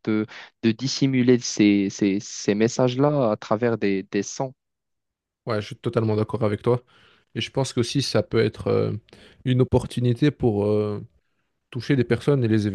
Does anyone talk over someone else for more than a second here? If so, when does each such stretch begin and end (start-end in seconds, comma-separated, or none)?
none